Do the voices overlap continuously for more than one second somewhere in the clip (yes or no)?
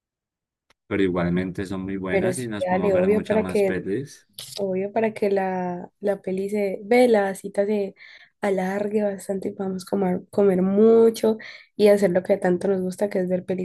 yes